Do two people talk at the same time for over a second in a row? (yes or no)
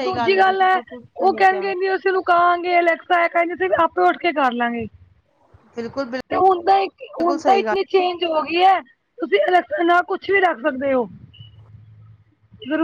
no